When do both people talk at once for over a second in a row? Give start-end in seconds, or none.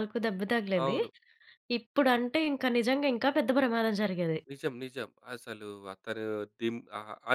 none